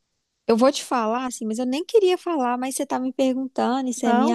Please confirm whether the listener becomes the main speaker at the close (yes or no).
no